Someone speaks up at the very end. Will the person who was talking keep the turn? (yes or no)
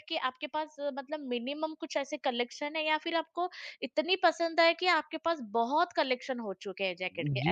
no